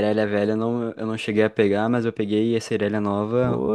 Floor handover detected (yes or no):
yes